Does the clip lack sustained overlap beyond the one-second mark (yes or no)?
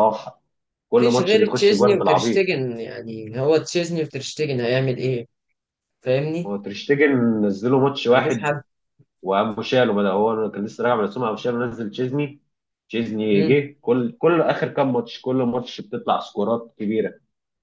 no